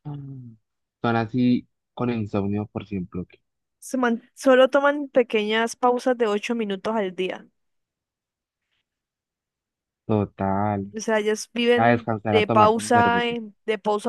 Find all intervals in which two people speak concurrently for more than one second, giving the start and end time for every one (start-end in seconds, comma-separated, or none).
11.8-13.4